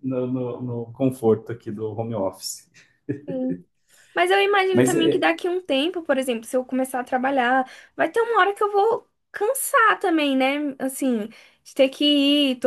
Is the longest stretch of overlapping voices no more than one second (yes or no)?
yes